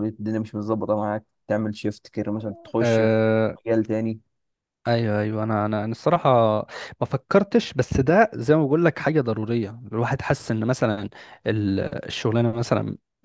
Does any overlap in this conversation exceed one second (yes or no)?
no